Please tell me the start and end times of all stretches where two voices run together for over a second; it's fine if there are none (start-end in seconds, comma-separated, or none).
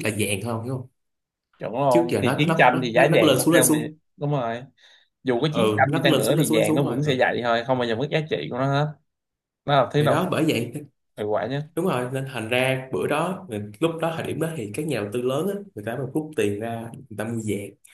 1.9-4.0, 5.5-7.1